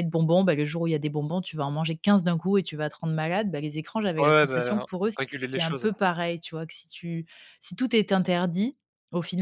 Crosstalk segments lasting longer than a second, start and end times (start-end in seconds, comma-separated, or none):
4.2-5.9